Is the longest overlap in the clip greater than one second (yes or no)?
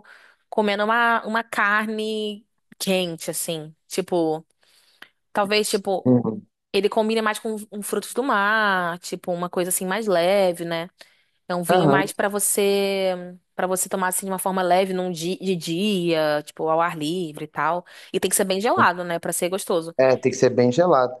no